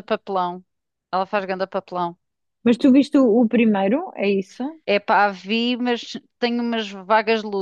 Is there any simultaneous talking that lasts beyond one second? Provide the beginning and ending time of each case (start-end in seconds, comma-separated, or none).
none